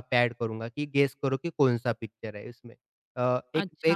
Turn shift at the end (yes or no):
yes